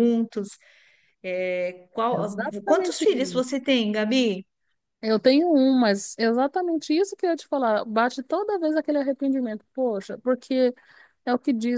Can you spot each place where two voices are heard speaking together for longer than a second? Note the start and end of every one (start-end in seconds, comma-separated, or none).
2.1-3.5